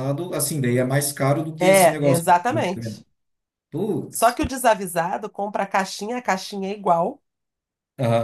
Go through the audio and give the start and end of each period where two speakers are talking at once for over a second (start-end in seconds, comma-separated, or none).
1.6-3.0